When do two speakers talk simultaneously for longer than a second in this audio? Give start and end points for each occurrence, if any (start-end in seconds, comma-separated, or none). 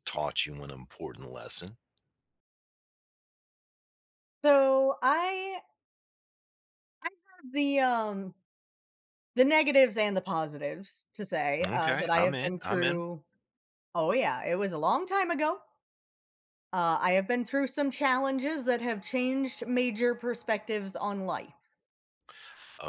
11.7-13.0